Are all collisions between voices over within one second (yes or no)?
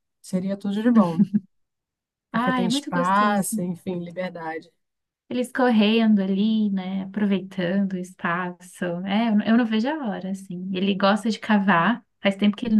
no